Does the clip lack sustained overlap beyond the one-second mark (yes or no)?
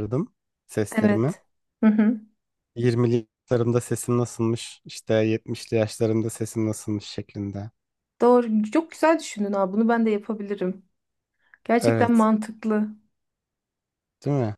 yes